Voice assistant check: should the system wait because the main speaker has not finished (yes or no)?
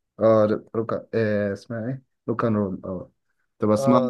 yes